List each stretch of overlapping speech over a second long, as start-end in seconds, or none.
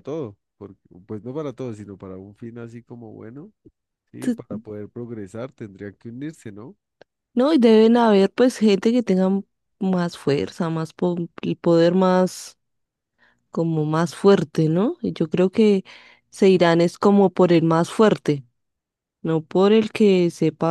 none